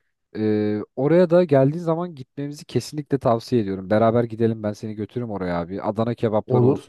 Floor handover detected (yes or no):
no